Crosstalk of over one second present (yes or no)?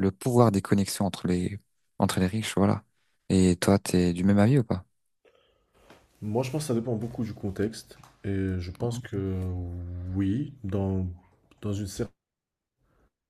no